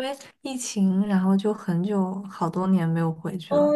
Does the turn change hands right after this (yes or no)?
yes